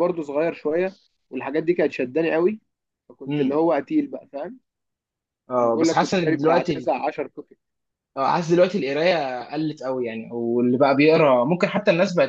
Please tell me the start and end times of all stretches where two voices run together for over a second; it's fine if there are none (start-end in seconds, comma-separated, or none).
5.6-6.9